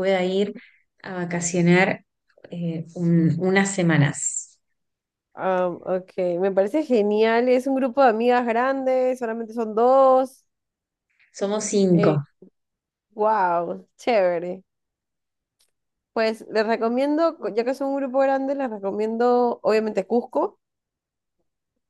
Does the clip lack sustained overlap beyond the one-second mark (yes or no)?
yes